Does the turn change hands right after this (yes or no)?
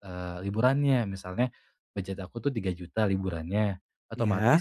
no